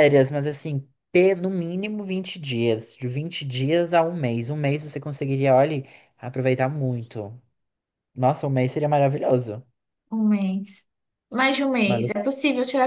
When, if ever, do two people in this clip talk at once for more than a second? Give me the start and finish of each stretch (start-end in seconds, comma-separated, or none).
none